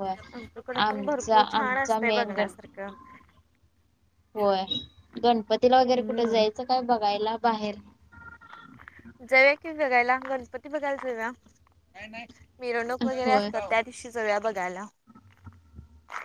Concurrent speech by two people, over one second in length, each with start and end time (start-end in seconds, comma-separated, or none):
0.8-2.7